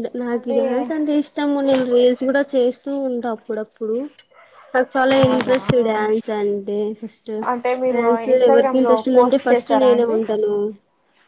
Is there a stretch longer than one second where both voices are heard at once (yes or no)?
yes